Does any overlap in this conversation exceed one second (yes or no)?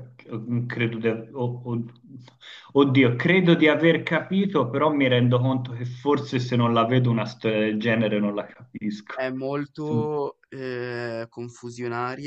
no